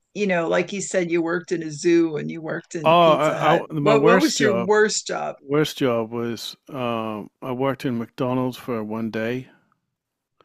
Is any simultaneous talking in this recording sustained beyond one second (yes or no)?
yes